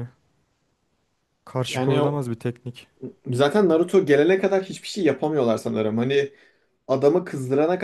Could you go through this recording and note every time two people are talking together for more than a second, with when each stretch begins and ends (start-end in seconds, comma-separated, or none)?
none